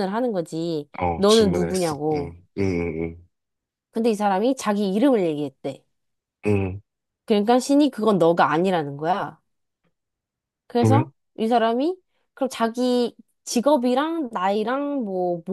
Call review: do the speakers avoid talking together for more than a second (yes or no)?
no